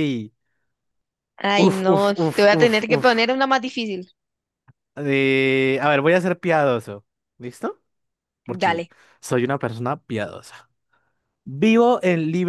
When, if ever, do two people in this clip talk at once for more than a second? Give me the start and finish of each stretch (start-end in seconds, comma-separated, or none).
1.5-3.4